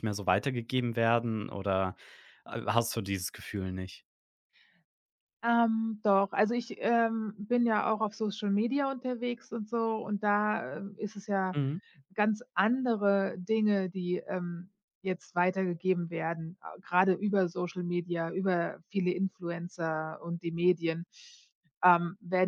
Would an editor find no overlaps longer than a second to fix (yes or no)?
yes